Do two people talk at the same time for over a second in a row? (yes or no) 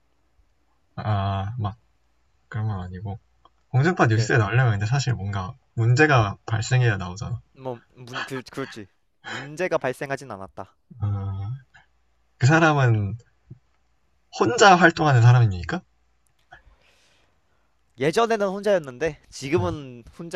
no